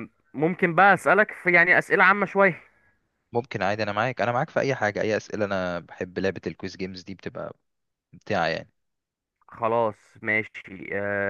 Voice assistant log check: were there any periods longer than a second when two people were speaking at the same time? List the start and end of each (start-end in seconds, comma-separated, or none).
none